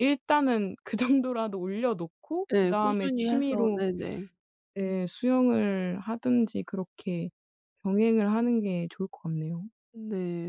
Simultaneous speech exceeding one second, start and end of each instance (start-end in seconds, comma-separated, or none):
2.5-3.8